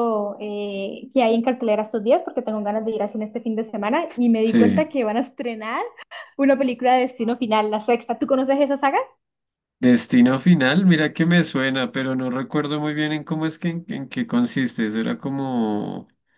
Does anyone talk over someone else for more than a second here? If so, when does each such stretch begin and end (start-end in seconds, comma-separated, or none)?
none